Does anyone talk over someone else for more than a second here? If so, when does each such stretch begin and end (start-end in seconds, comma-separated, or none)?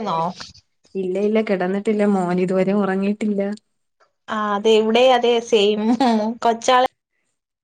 none